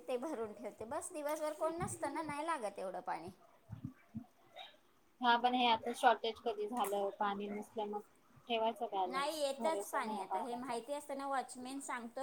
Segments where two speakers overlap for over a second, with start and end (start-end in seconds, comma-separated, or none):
9.1-10.8